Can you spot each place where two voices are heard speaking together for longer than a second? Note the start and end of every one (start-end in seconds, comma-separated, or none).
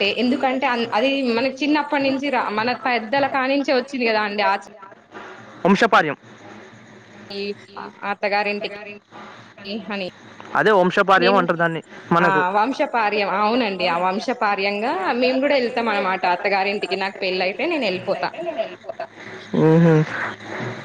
12.6-18.3